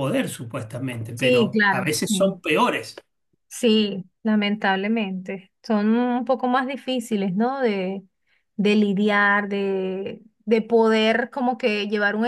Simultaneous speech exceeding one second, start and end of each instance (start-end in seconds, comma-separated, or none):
1.1-2.4